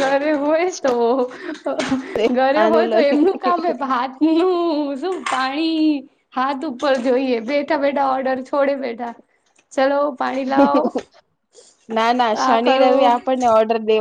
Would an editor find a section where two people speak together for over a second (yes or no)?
no